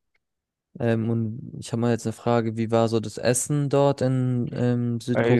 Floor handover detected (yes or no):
yes